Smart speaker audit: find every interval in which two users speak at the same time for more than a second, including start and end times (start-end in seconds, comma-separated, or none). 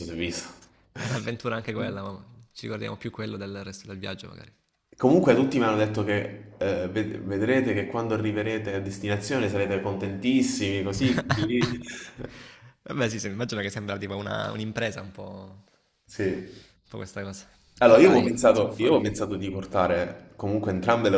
17.8-19.2